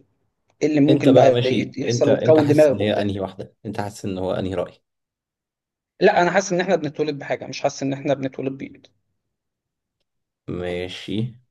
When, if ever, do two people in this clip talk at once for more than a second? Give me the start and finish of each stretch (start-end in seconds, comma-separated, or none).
0.9-3.1